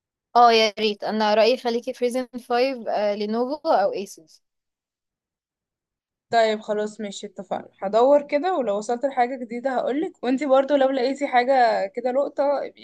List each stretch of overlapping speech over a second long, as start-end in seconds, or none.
none